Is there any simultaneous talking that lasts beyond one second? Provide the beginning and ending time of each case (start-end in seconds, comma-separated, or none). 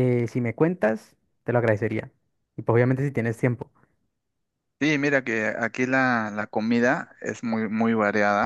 none